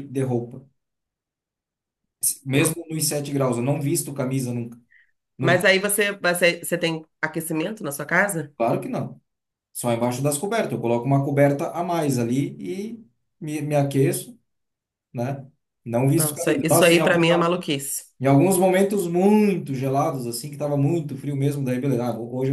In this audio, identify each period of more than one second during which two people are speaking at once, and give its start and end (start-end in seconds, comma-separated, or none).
16.1-17.6